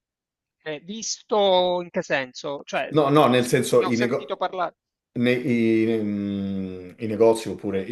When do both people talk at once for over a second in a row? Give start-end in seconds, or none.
2.9-4.4